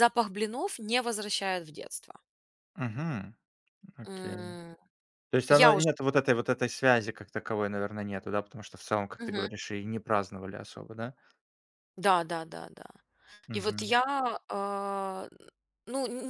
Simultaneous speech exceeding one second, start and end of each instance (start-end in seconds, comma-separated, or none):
none